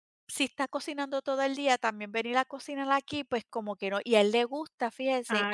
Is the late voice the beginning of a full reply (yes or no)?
no